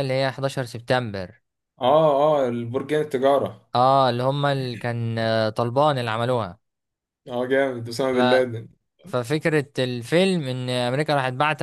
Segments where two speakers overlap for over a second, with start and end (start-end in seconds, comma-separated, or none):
none